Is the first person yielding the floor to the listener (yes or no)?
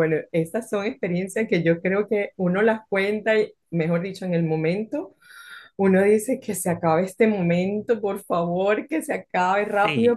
no